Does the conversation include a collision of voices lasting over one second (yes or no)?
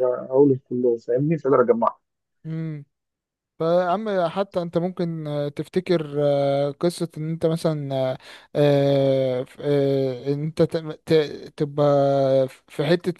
no